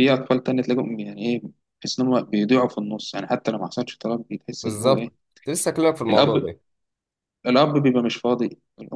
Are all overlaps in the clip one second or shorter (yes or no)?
yes